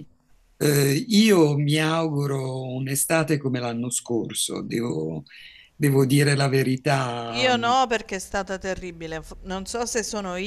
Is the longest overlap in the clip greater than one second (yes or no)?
no